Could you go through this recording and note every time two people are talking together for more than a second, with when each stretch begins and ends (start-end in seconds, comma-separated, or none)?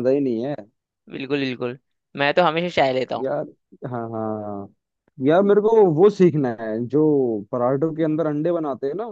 none